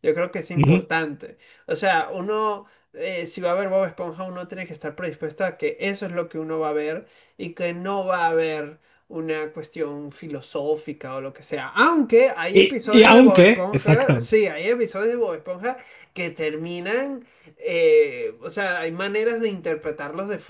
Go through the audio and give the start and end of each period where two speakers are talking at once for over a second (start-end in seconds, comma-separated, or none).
12.5-14.3